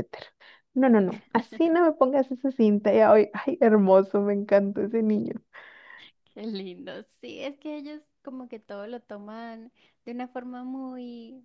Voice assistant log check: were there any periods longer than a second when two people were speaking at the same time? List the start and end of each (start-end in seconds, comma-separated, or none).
none